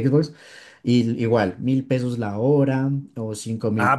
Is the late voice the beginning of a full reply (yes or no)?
yes